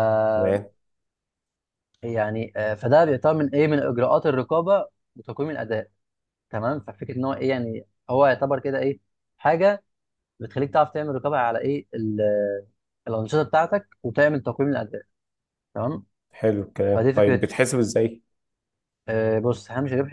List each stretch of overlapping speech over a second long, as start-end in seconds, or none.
none